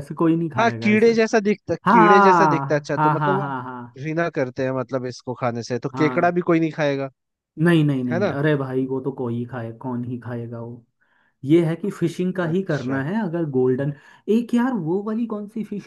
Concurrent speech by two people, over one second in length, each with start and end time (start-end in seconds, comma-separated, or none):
1.9-3.5